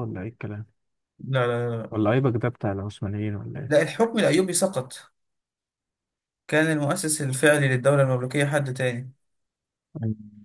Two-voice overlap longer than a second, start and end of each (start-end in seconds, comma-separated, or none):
none